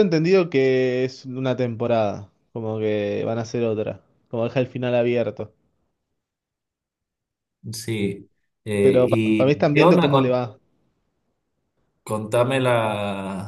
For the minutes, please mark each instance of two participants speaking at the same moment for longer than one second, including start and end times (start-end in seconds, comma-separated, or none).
8.8-10.4